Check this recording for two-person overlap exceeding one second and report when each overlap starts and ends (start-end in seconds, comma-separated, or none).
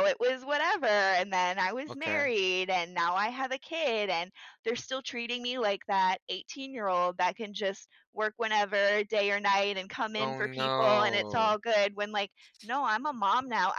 10.2-11.6